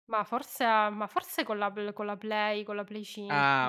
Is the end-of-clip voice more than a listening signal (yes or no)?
yes